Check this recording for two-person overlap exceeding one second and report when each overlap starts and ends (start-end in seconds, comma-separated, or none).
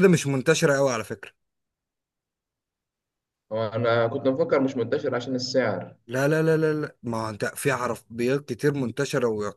none